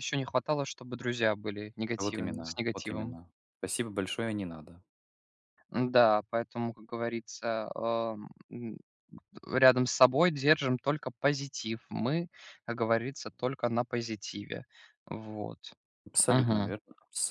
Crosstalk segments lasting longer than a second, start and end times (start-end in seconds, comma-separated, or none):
2.0-3.2